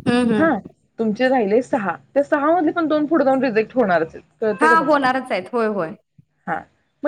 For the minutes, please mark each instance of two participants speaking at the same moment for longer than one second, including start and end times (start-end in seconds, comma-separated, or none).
none